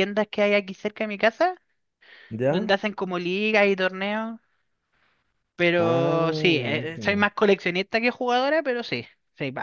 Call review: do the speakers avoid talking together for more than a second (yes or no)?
no